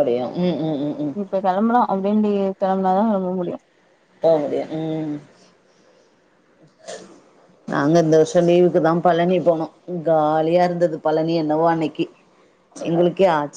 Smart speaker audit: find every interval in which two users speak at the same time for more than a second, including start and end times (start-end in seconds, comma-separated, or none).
none